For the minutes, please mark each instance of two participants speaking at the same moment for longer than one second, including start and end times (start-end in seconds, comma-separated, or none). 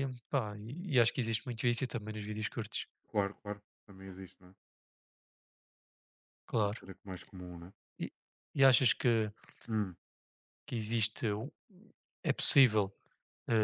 none